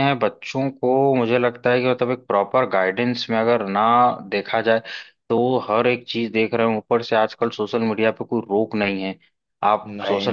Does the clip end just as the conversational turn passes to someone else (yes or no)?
no